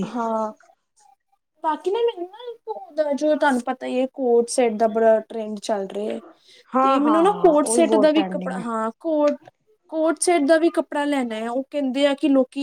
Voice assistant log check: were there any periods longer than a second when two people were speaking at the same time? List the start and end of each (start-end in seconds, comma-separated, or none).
6.8-8.6